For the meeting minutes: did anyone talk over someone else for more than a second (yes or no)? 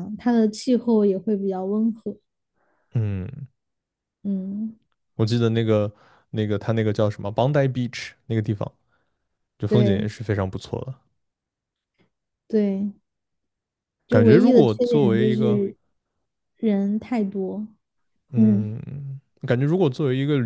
yes